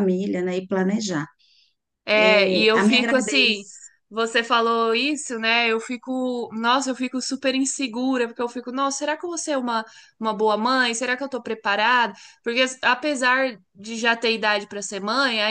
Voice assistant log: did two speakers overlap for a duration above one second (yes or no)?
yes